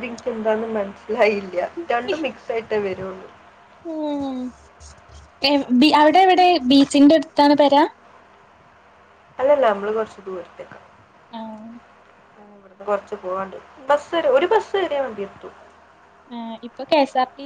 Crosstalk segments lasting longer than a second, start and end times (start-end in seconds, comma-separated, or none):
none